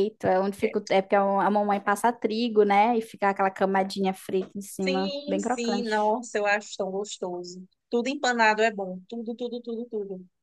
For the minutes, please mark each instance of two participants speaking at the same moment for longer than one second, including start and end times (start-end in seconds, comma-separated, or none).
4.8-6.1